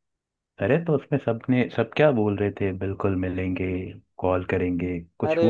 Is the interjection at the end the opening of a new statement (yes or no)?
yes